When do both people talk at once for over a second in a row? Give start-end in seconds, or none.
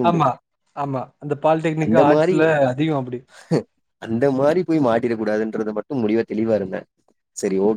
none